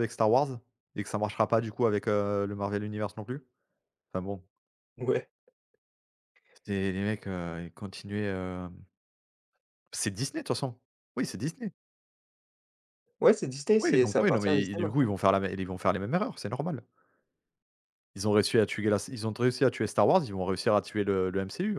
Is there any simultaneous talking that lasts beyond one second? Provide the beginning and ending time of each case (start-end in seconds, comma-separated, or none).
13.8-15.1